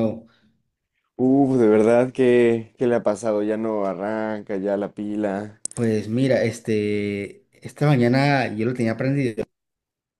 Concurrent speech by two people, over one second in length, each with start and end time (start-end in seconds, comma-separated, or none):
none